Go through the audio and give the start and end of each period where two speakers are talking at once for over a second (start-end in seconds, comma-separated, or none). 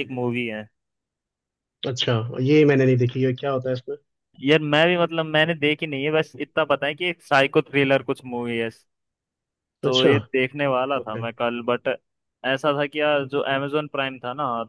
none